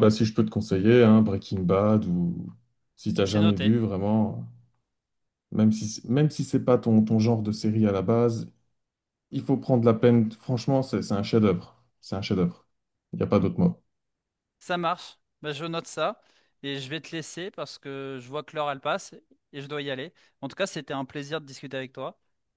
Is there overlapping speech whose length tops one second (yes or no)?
no